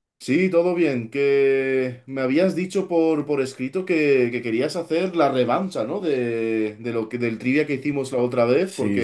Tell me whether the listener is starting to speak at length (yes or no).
yes